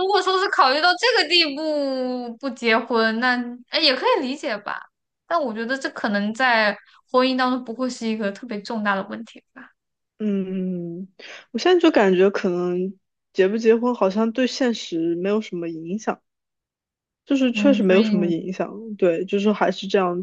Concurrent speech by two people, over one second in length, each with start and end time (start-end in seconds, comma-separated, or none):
none